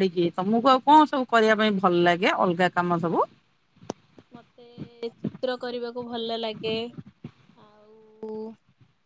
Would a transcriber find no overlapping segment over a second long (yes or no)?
yes